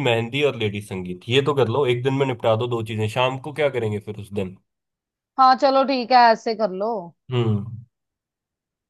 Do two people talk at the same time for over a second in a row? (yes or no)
no